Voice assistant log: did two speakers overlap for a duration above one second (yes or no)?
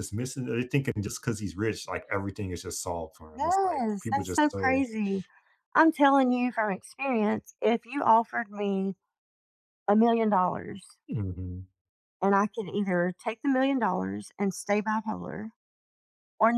yes